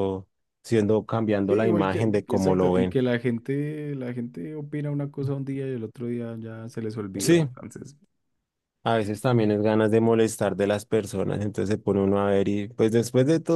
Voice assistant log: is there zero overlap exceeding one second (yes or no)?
no